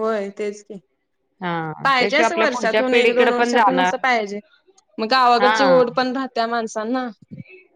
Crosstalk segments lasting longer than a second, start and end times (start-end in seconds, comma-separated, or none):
2.0-4.0